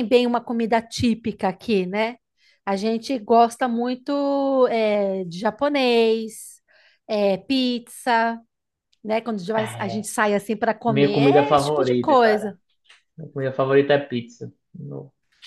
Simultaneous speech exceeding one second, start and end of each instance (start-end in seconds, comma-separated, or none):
10.9-12.6